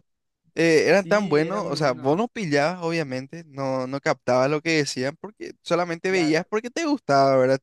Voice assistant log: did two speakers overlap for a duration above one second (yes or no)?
yes